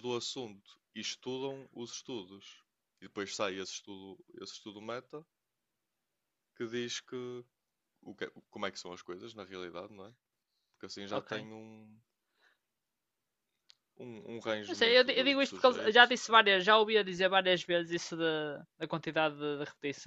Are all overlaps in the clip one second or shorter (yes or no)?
no